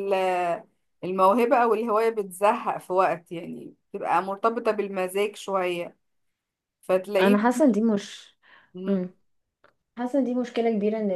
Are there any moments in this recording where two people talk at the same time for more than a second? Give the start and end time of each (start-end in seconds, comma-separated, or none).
none